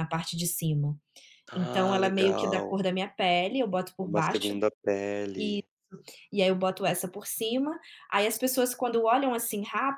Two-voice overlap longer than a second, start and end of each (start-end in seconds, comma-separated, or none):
1.5-2.8